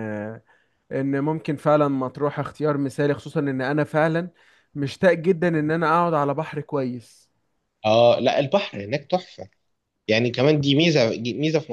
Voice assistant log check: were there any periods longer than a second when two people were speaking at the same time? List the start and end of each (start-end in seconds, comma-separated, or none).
none